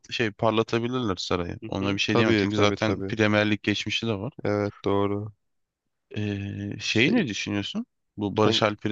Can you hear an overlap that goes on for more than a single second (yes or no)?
yes